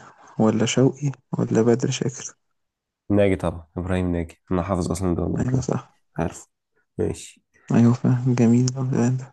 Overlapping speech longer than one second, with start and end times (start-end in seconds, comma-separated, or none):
none